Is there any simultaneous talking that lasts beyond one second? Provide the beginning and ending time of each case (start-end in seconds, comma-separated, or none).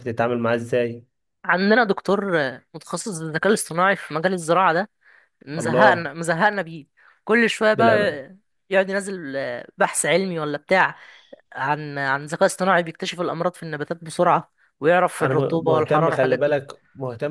15.2-16.6